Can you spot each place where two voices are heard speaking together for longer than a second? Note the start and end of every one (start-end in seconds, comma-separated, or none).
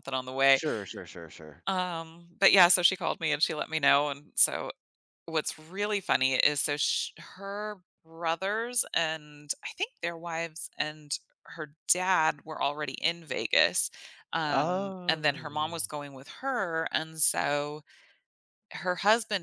14.5-15.8